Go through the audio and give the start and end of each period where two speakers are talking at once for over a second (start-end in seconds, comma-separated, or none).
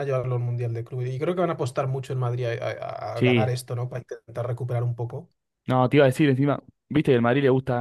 none